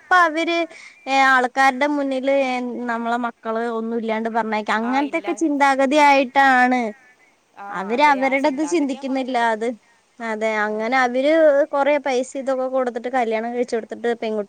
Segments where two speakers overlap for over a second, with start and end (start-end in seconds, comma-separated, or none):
7.8-9.6